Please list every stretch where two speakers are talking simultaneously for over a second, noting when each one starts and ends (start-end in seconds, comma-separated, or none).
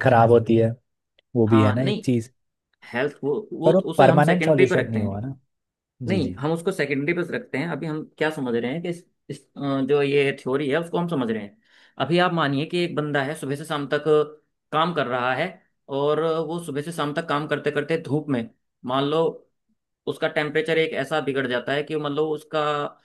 3.6-5.1